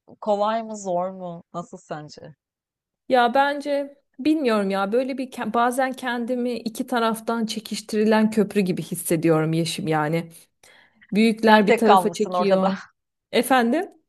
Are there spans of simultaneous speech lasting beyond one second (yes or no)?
yes